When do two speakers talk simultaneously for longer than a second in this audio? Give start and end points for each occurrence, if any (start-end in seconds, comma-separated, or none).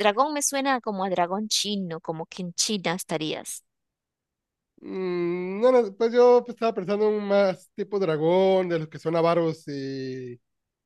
none